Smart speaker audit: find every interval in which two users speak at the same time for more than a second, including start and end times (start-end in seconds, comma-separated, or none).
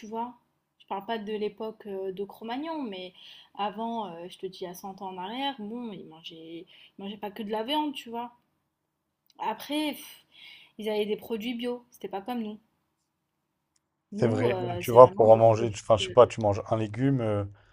14.2-15.8